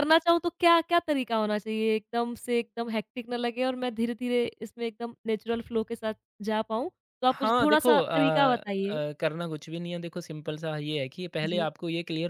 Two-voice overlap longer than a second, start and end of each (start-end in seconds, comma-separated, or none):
7.3-9.0